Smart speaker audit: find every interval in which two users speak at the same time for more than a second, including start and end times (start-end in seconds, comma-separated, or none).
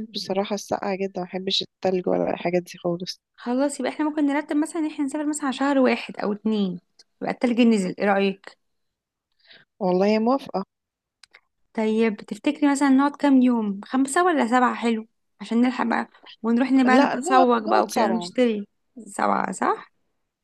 16.9-18.3